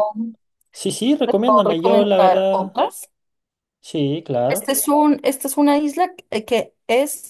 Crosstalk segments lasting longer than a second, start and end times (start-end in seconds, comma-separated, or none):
1.2-2.8